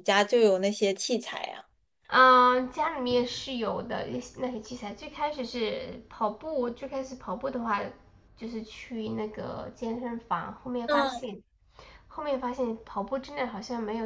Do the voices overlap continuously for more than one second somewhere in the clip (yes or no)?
no